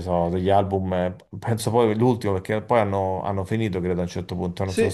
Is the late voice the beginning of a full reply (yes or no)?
yes